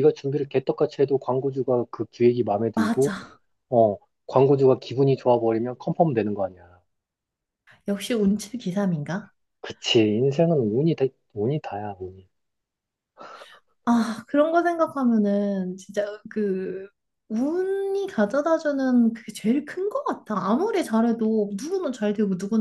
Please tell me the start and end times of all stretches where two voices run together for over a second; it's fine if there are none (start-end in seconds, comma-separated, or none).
none